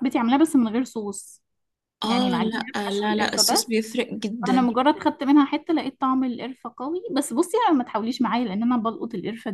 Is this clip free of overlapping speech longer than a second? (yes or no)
no